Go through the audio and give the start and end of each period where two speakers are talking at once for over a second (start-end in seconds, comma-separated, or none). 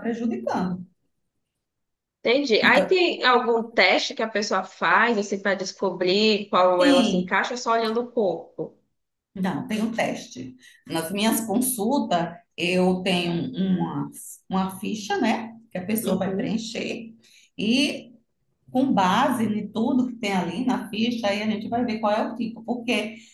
none